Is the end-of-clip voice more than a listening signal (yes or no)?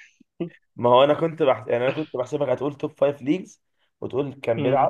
no